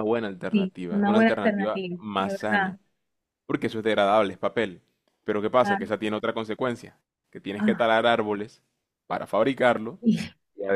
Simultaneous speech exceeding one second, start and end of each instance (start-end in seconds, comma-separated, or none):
0.5-2.7